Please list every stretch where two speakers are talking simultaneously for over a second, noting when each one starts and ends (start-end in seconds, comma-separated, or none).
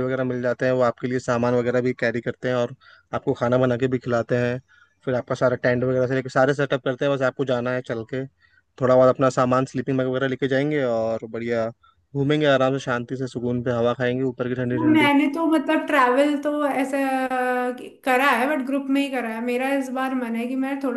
none